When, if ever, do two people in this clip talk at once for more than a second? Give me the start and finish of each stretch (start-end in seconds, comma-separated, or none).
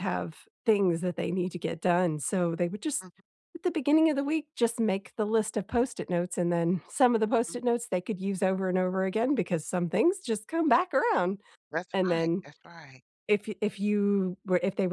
none